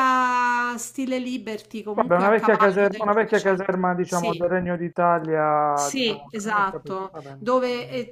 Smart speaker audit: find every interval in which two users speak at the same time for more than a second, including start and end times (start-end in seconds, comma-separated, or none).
1.9-4.5, 5.7-7.5